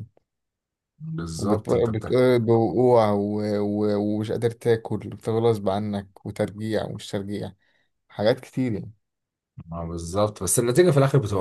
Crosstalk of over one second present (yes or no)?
no